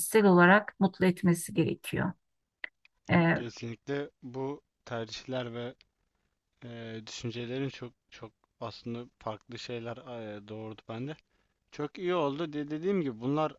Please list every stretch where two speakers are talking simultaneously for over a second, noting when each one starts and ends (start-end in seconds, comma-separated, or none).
none